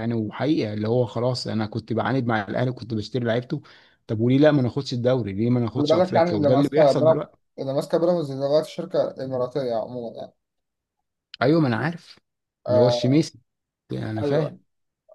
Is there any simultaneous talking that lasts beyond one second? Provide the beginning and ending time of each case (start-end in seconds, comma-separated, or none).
5.8-7.4